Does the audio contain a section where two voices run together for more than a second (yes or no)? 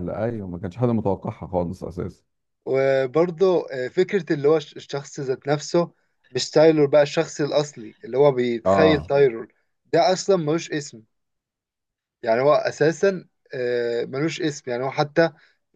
no